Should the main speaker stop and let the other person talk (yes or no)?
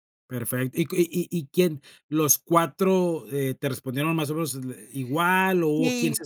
yes